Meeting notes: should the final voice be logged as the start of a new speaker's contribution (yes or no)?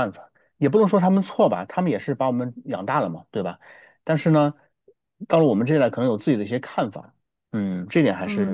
yes